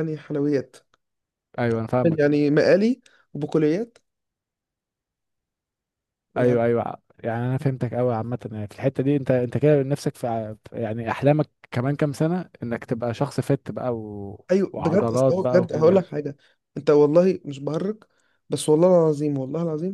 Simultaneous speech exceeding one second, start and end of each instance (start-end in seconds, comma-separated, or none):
14.5-16.1